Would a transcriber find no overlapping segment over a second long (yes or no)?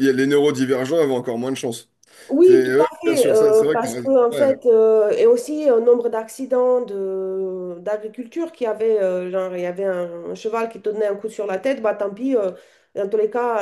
no